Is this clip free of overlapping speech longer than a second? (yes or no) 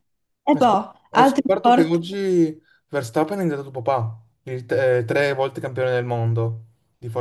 no